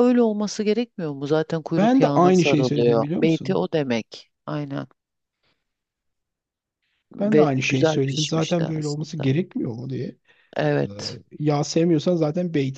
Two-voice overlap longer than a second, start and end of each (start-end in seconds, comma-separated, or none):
1.8-3.6, 7.2-9.3